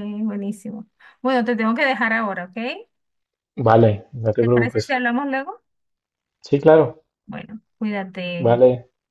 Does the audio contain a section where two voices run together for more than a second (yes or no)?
no